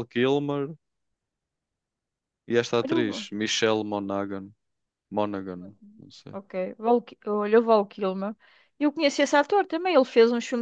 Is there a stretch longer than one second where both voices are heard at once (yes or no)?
no